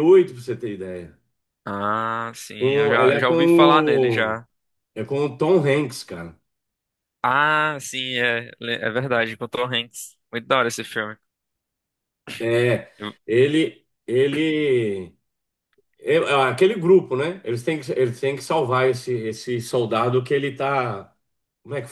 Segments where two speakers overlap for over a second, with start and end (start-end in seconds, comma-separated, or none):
2.6-4.4